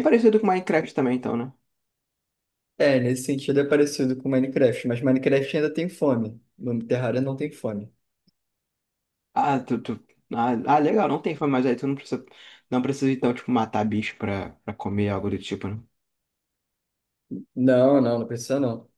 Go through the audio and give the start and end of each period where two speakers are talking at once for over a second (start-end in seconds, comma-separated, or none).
none